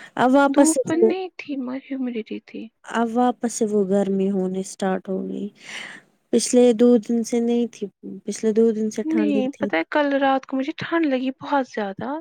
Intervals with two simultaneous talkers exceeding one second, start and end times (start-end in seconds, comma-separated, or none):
none